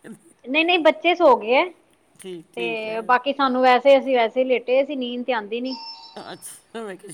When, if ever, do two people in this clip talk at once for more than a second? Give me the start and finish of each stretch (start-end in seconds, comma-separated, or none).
none